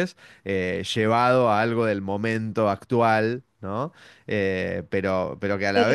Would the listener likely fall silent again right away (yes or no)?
yes